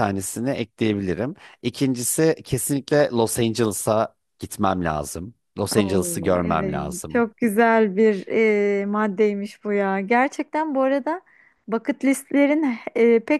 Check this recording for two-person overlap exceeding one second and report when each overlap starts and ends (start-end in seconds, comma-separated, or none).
5.8-7.2